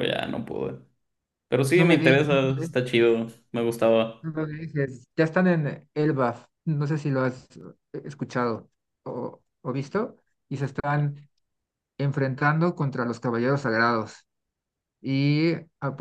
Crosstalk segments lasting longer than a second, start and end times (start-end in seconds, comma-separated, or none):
1.7-3.2